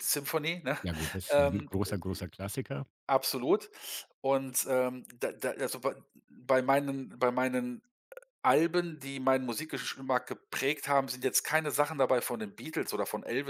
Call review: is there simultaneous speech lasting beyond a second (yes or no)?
no